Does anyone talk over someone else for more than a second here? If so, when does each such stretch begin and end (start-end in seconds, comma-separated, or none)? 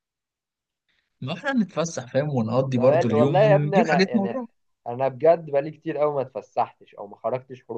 2.8-4.4